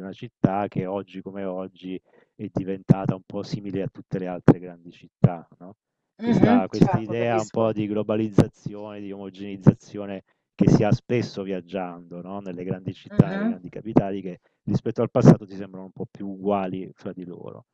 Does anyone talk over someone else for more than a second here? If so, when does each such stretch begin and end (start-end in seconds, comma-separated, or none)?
6.2-7.7